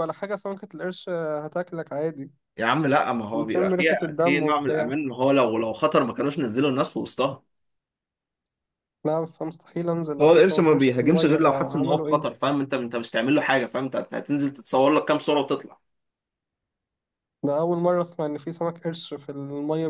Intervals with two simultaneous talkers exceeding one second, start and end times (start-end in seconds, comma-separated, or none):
3.3-4.9, 10.2-12.2